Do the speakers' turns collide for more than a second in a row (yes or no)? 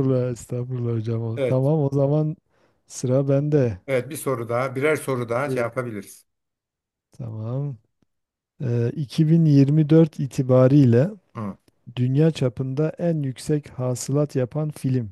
no